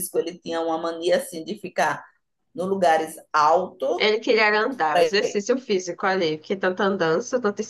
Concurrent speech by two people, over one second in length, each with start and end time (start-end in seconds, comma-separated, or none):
none